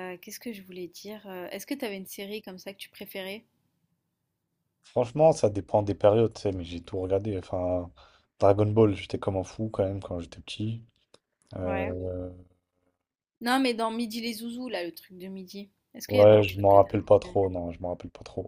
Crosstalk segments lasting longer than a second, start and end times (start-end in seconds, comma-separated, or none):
16.1-17.3